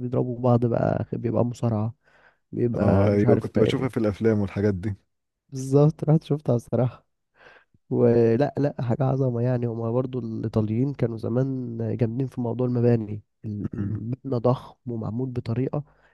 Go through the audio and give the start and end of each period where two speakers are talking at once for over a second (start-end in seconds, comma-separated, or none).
2.7-4.0